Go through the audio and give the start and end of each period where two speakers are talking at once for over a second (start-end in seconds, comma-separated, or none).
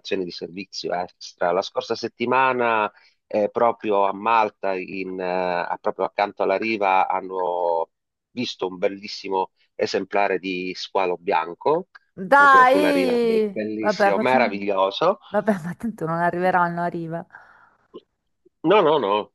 12.3-14.5